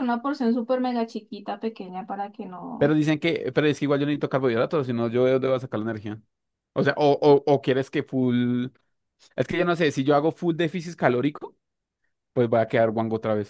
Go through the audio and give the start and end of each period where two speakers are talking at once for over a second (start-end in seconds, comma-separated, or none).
none